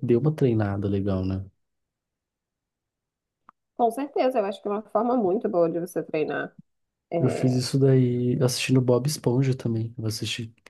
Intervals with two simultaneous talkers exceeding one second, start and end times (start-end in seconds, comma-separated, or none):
none